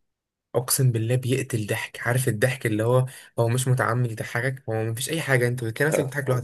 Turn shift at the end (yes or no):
no